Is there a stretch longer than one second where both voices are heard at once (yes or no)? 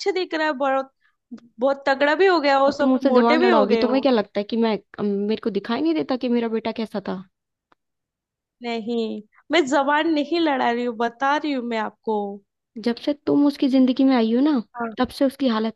yes